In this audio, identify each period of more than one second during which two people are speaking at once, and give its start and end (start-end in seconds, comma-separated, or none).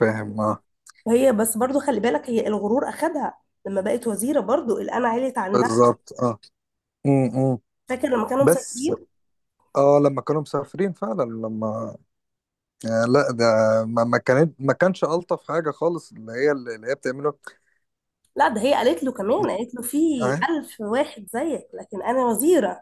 none